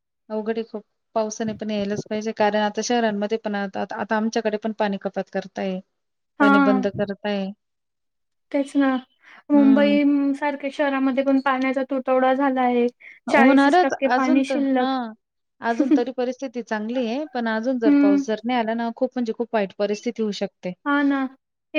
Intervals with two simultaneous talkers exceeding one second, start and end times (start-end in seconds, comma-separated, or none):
13.3-14.9